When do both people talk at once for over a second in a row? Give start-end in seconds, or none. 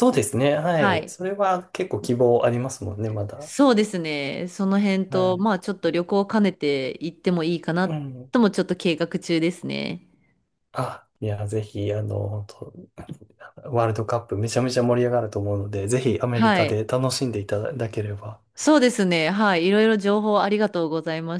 none